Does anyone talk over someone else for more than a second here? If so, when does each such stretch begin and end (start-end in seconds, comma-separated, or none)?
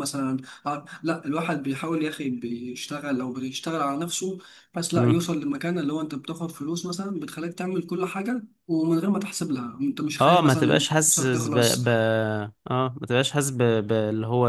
10.2-11.8